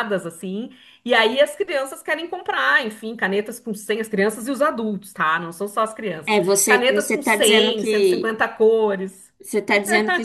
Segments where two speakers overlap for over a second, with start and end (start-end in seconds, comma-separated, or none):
6.3-8.3